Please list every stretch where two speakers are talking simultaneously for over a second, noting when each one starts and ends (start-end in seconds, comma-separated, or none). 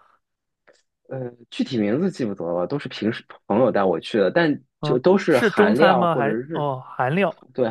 4.8-6.7